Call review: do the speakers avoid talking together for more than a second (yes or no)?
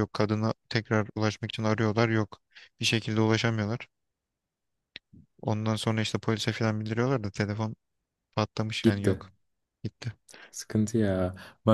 yes